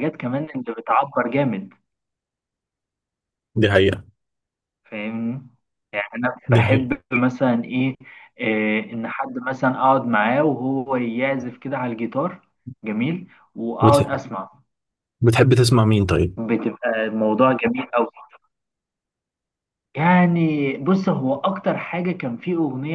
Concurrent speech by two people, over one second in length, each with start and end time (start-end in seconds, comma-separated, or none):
none